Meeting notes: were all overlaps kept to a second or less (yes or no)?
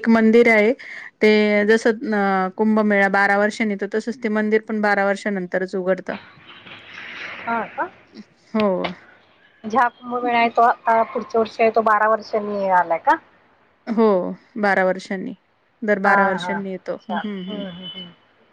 yes